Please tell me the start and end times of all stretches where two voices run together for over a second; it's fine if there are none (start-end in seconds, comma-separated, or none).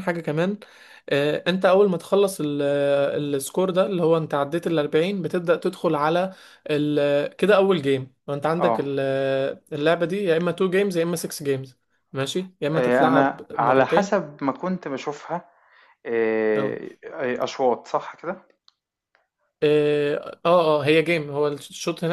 12.7-14.3